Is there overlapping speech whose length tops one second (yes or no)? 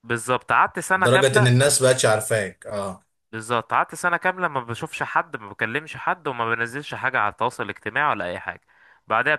no